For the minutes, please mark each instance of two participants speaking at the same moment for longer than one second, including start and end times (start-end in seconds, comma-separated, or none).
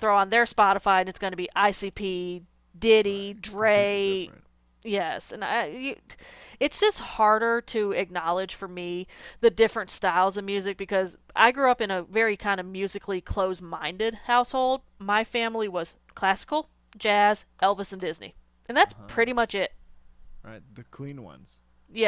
3.0-4.3